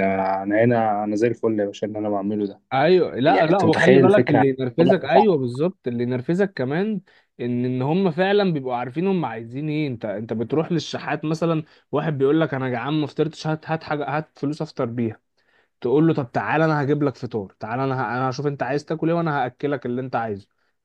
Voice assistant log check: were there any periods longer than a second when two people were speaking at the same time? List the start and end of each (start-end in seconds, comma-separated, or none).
3.3-5.4